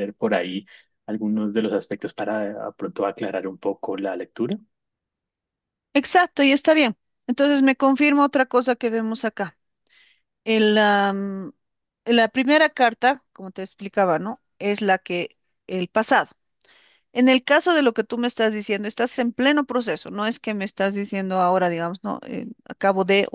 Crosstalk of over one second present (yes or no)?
no